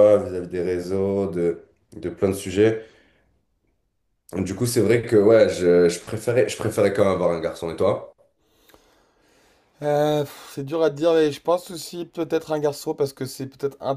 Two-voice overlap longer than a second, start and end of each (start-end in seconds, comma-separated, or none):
none